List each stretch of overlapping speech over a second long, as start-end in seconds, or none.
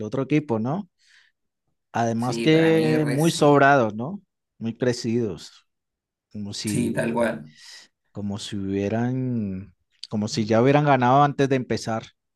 2.2-3.7